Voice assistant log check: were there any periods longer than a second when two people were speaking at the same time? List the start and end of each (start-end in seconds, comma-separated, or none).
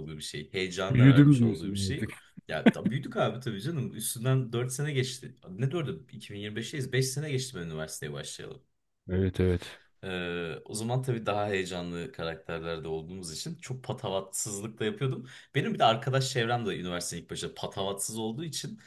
0.9-2.1